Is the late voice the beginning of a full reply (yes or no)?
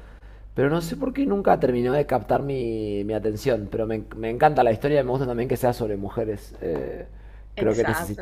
no